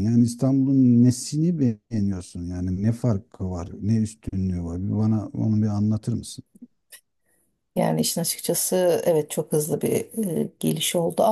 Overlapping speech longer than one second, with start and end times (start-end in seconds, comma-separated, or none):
none